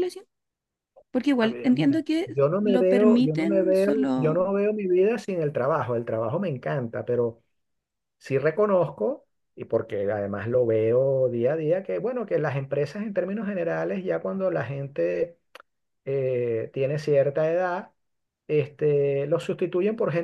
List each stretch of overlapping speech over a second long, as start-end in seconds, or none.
1.4-4.4